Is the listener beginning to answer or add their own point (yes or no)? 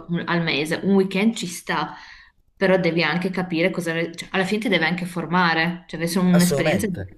yes